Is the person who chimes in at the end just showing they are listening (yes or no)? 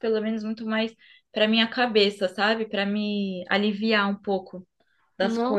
no